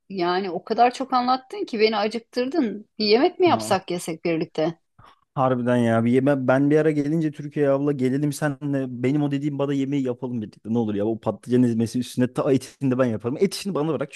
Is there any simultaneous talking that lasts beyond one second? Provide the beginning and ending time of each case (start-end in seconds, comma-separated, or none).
none